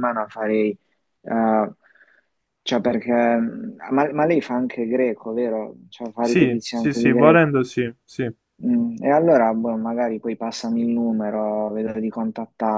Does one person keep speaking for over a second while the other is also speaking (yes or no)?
yes